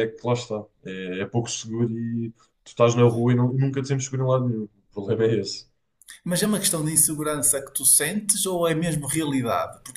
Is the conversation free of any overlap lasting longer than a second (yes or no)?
yes